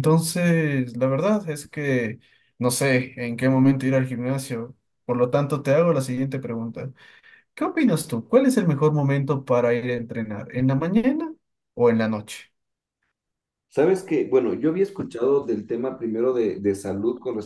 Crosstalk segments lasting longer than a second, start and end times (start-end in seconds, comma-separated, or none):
none